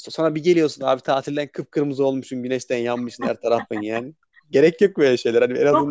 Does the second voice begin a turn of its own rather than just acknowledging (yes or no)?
yes